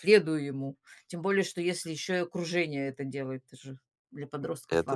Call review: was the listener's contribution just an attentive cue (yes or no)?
no